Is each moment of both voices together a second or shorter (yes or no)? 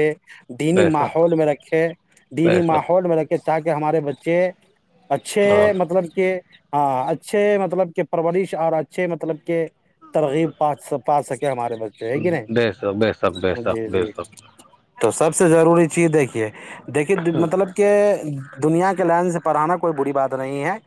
no